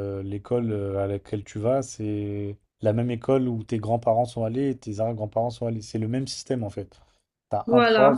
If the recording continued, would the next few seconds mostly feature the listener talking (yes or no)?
no